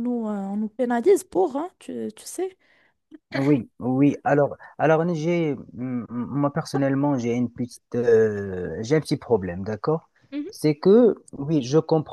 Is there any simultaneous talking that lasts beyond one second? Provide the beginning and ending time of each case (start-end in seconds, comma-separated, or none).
none